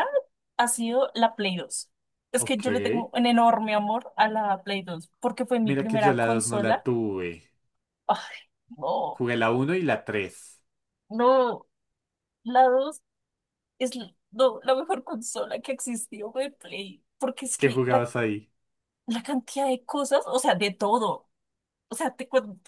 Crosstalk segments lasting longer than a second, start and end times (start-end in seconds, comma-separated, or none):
5.6-6.9